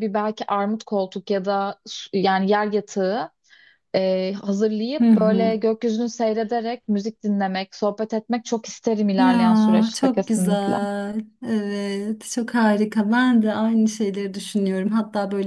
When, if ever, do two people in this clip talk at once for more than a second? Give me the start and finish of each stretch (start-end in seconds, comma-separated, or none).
9.2-10.8